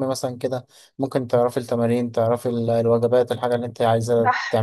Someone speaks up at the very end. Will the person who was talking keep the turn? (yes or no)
no